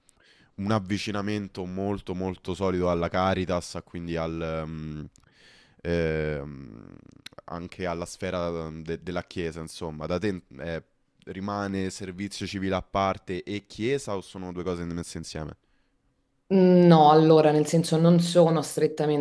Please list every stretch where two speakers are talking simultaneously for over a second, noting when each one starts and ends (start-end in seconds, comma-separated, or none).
none